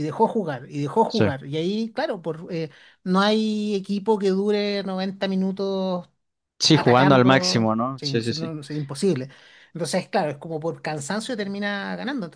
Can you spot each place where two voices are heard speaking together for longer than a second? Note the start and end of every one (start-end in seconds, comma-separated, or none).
6.7-8.5